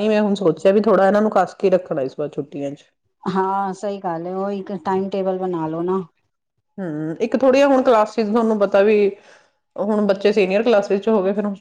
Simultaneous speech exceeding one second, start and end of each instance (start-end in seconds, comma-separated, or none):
none